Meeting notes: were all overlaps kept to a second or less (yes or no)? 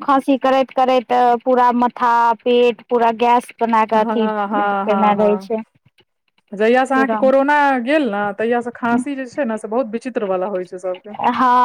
no